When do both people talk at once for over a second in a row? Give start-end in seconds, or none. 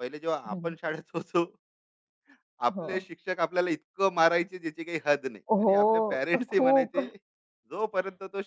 5.5-7.1